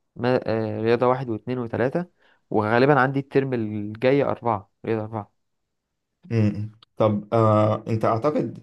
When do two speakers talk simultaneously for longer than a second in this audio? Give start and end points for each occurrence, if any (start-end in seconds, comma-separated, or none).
none